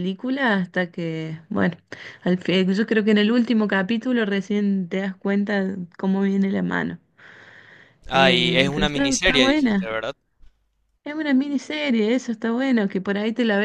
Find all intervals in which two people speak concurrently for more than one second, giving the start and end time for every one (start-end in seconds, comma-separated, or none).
8.1-9.9